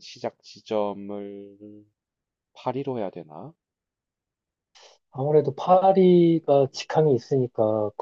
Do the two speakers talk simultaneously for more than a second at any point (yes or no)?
no